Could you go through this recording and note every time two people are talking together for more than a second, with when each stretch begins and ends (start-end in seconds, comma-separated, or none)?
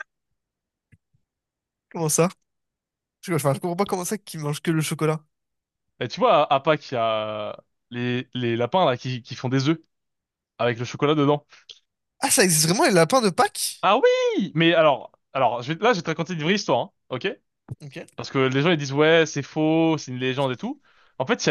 none